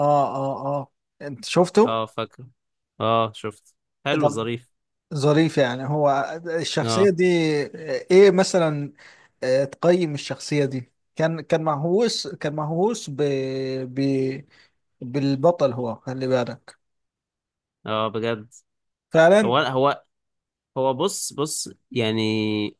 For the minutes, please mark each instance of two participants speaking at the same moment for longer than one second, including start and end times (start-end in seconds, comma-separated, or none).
none